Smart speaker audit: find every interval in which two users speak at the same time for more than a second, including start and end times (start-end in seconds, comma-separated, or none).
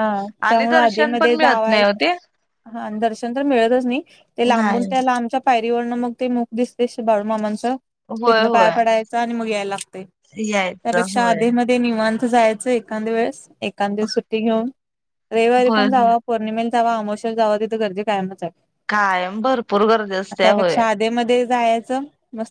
0.5-1.8